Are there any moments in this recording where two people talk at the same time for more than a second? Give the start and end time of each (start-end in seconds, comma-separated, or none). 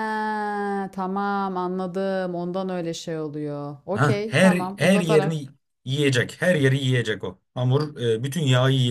3.9-5.4